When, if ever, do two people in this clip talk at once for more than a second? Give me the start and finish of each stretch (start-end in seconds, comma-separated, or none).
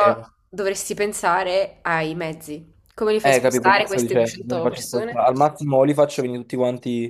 3.2-5.2